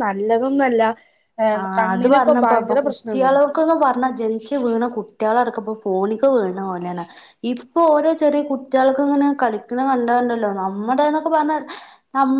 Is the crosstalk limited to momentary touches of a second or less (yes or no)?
no